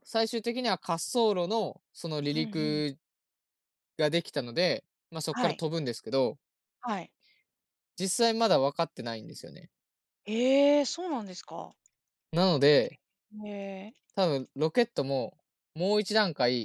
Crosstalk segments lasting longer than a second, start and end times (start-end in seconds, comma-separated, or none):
none